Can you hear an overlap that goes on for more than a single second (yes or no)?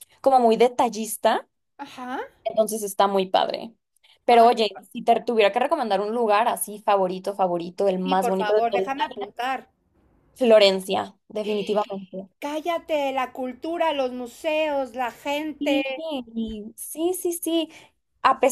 yes